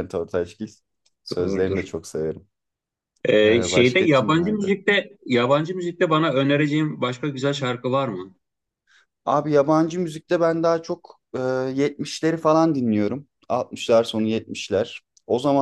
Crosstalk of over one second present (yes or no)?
yes